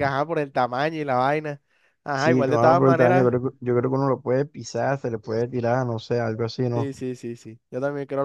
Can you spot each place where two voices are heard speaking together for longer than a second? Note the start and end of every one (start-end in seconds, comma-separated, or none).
2.1-3.3